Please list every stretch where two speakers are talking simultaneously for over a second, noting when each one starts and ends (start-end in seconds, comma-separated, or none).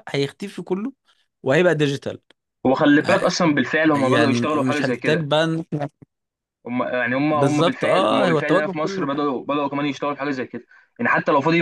4.0-5.3, 7.3-9.1